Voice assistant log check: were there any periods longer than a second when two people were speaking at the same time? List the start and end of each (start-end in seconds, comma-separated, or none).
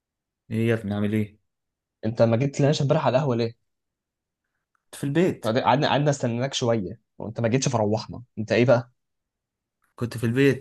none